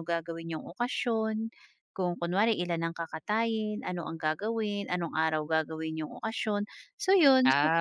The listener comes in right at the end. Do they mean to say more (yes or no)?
yes